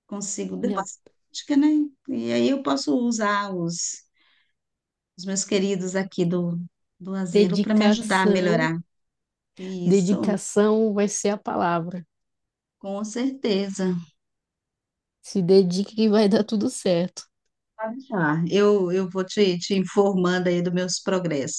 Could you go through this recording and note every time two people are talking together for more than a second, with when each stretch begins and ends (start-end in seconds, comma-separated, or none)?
7.3-8.7